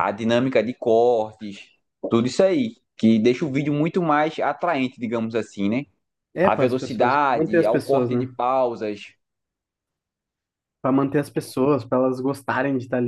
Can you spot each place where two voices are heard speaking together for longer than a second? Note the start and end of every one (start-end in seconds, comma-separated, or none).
6.4-8.3